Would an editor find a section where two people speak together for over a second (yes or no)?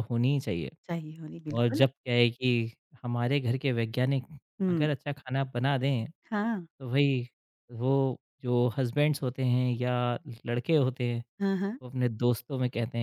no